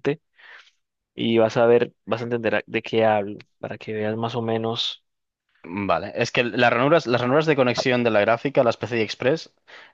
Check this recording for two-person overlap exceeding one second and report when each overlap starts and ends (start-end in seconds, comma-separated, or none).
none